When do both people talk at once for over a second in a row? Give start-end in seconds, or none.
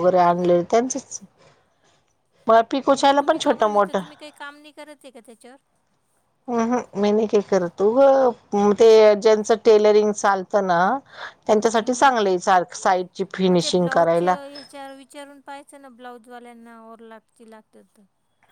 none